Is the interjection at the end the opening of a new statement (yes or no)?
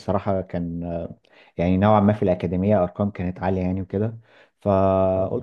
no